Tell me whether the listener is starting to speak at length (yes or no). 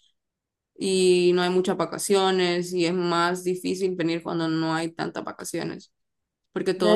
yes